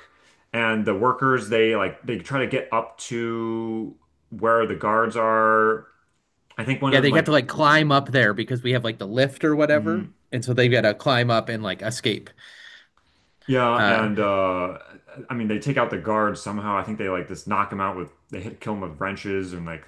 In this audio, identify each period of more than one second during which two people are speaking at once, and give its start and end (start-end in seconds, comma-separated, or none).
none